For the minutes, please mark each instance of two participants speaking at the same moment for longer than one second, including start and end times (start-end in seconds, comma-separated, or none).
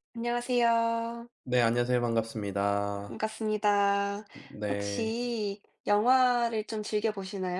none